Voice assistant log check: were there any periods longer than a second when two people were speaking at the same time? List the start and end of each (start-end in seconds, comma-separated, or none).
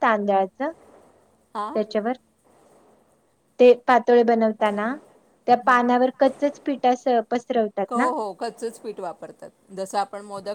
none